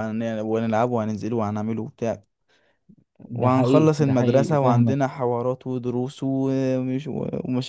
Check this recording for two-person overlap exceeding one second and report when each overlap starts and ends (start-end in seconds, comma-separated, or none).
3.3-5.0